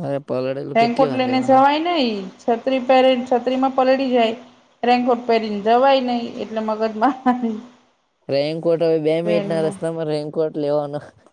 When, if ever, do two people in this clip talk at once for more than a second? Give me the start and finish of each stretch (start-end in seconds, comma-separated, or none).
none